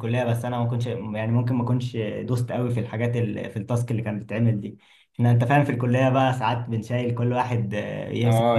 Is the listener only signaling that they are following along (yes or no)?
no